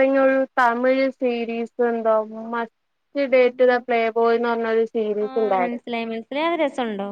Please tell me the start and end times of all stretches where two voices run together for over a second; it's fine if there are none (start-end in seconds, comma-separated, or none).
none